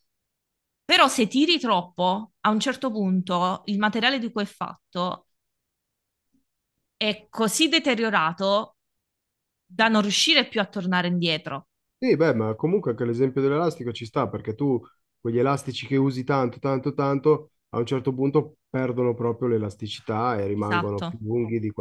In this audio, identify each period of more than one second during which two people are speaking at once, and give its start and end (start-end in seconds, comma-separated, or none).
none